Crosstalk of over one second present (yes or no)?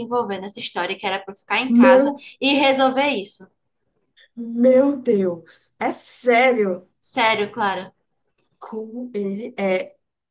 no